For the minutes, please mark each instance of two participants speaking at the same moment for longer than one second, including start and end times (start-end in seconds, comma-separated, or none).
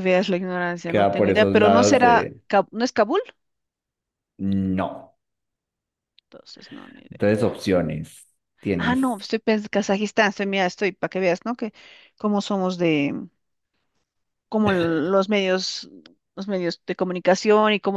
0.9-2.4